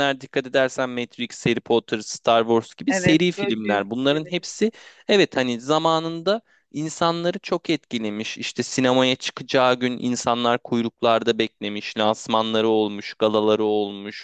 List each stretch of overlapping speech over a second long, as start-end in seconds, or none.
2.9-4.5